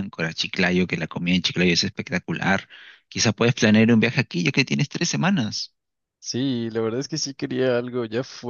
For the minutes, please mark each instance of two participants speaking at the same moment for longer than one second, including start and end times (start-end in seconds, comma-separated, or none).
none